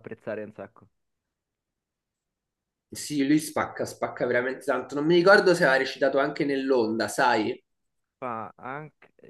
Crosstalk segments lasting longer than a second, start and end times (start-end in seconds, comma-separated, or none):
none